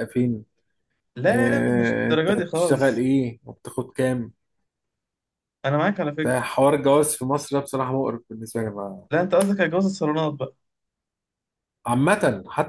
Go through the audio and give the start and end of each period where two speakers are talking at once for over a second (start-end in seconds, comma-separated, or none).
1.3-3.0